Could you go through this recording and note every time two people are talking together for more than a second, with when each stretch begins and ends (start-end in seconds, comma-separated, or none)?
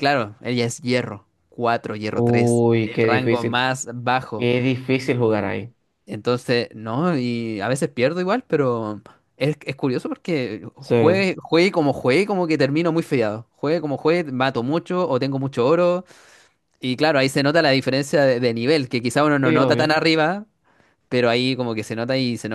2.1-3.7